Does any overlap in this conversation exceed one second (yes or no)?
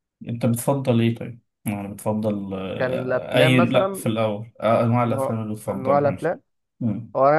yes